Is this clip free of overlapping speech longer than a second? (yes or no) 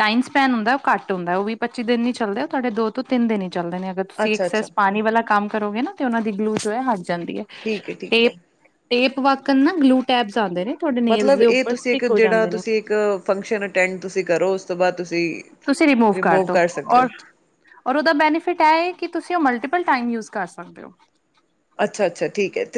no